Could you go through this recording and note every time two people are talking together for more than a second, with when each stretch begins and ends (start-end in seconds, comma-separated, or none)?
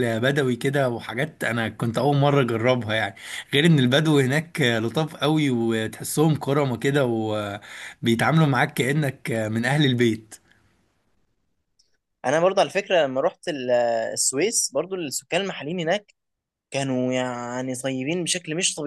none